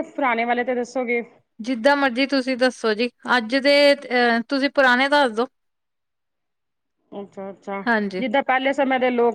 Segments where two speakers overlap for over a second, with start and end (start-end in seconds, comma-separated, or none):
none